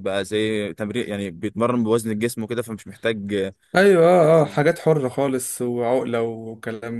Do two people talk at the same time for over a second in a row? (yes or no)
no